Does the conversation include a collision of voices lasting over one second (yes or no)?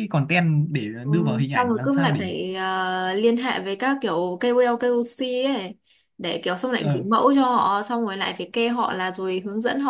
yes